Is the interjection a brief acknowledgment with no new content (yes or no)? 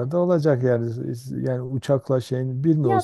no